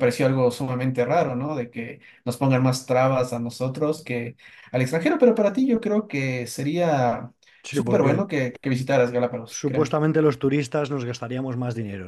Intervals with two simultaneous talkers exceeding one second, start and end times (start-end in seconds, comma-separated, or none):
none